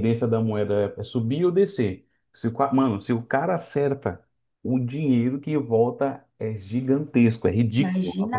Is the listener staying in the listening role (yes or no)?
no